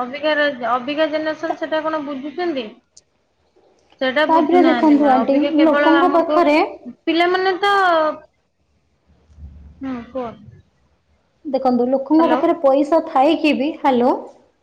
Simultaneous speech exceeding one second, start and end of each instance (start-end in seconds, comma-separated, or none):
4.3-6.4